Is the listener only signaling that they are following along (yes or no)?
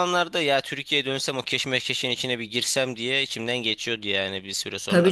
no